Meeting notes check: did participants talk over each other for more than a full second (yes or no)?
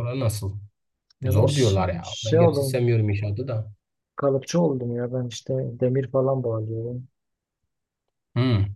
yes